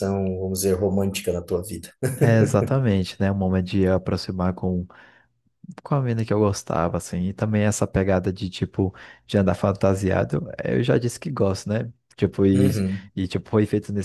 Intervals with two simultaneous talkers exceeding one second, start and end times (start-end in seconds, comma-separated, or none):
none